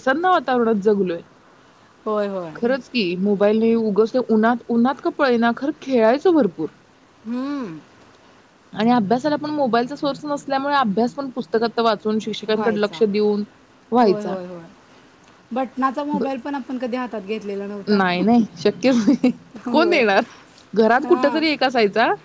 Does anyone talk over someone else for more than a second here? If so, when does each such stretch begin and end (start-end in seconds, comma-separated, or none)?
none